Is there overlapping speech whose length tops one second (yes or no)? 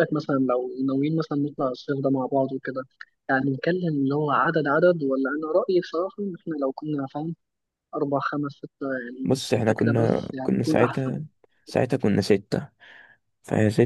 yes